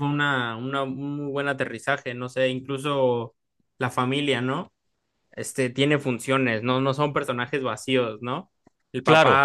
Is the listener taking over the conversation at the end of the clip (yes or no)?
no